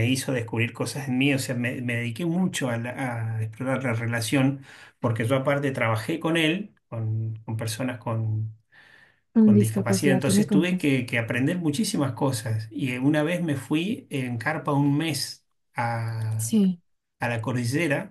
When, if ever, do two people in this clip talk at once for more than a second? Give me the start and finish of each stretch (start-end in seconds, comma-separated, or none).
9.4-10.9